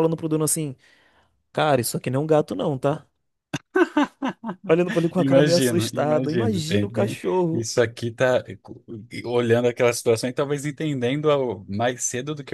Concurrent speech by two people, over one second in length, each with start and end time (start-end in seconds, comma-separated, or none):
5.2-7.7